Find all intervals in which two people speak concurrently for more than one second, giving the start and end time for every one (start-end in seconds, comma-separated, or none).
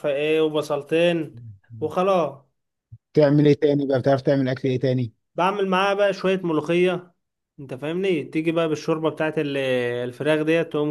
none